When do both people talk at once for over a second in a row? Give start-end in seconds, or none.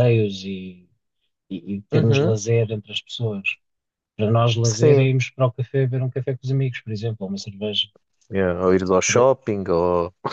none